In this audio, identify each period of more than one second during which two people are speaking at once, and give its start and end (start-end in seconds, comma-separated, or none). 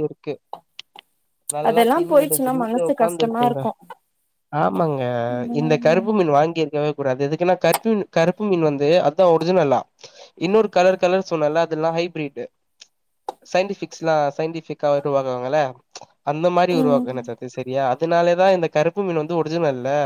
1.7-3.6